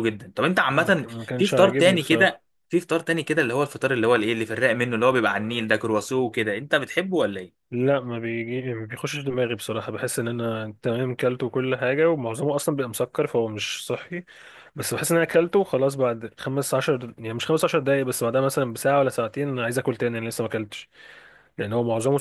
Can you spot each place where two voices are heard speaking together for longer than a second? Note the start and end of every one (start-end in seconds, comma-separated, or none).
0.8-2.4